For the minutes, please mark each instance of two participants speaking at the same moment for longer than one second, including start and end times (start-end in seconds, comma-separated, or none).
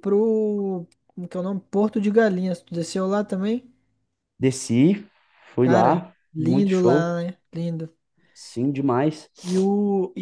5.6-7.2